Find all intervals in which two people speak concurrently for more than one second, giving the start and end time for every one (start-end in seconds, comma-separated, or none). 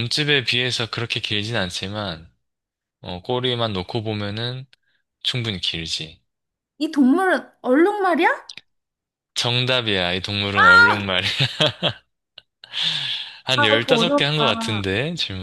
13.5-14.8